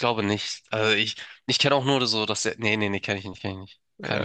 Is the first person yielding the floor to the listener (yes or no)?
yes